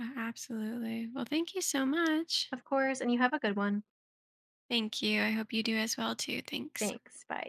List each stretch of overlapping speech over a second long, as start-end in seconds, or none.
none